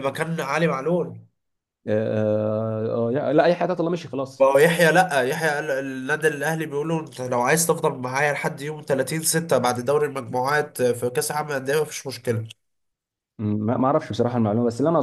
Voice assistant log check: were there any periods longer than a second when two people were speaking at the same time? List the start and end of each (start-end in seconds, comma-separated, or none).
none